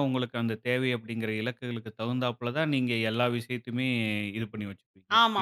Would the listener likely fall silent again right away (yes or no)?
no